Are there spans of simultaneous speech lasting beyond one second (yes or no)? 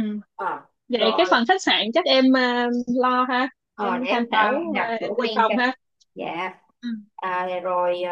yes